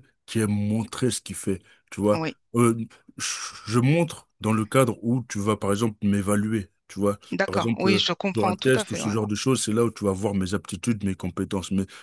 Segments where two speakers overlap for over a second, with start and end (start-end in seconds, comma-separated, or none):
7.3-9.1